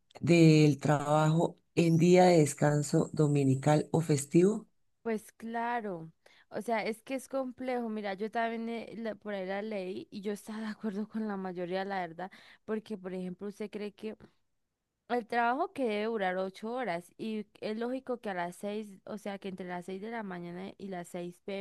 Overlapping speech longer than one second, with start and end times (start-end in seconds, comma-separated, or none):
none